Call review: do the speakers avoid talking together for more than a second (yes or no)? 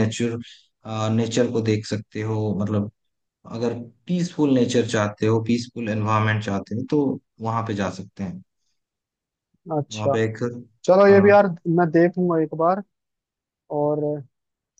yes